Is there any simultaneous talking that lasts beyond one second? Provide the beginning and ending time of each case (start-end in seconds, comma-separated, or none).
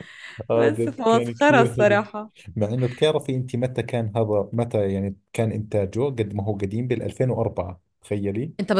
0.5-2.0